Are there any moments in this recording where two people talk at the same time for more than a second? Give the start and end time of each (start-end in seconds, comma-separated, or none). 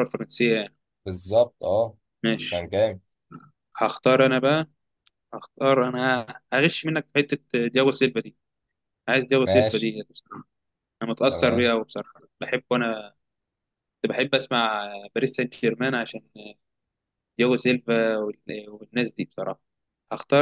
none